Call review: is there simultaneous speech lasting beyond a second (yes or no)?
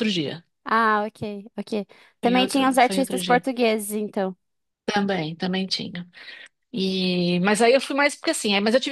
yes